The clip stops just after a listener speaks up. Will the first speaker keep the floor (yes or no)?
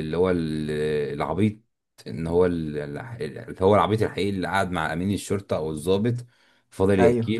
yes